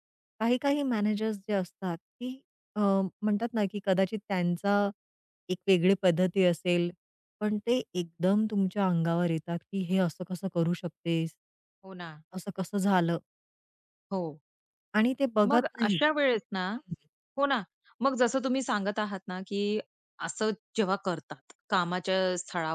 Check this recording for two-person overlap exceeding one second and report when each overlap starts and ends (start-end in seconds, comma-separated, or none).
none